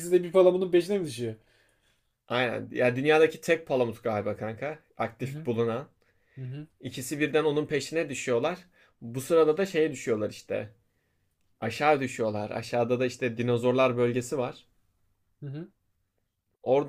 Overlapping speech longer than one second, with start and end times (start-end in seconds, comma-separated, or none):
none